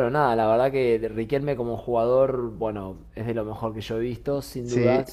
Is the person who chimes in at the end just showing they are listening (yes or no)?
yes